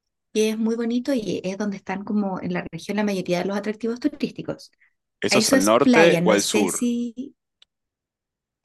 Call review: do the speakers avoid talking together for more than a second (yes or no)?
no